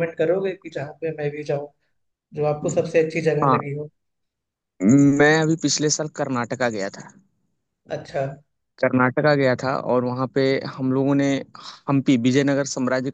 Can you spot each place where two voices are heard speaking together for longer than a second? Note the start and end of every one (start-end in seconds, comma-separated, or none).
none